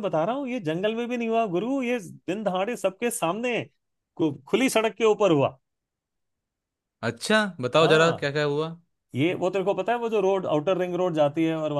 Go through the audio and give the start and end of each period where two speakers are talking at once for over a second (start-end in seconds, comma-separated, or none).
none